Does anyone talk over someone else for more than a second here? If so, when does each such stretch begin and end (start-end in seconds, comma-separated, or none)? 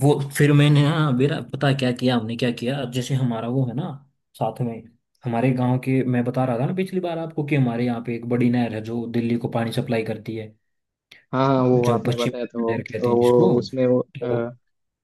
11.8-13.5